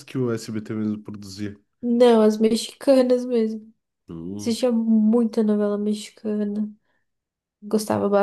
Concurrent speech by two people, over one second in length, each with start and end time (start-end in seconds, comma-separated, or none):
none